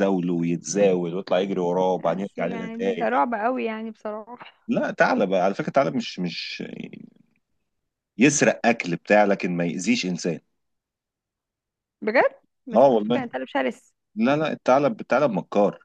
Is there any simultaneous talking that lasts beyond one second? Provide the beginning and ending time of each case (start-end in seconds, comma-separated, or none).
1.9-3.2